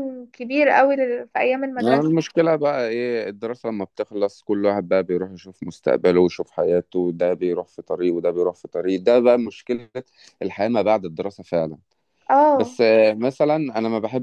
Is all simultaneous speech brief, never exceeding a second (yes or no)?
yes